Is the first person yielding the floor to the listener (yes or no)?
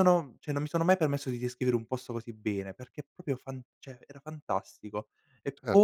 yes